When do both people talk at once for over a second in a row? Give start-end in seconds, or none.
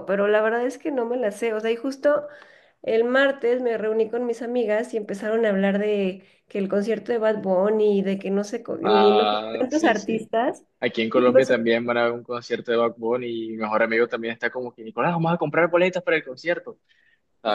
8.8-10.2